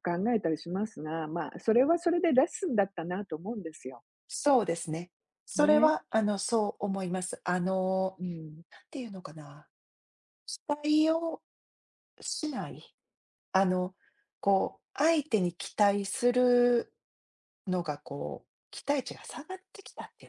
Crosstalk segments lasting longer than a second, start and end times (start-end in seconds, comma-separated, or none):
none